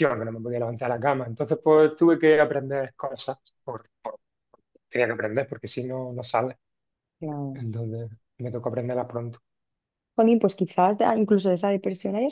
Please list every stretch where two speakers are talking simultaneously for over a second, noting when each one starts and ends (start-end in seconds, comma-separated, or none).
none